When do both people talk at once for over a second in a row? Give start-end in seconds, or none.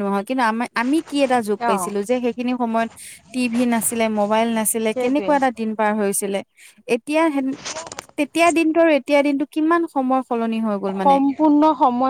none